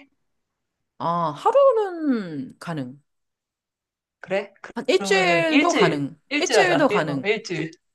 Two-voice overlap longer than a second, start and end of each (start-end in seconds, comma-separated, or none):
4.8-7.2